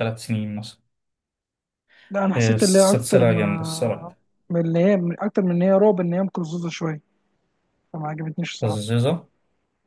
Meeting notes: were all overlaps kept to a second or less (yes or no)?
no